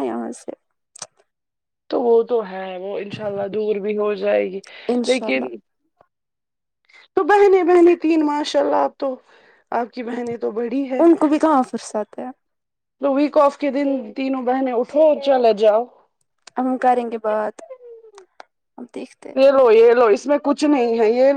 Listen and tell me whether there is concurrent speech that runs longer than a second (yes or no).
no